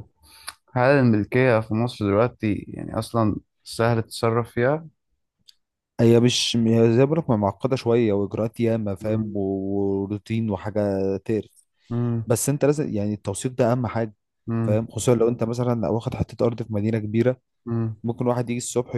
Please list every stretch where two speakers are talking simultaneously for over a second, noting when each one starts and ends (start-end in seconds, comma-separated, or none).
none